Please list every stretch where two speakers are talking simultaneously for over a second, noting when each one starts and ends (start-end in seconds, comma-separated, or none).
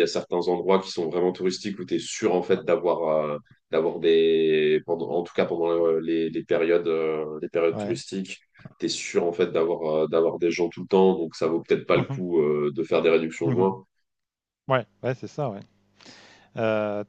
none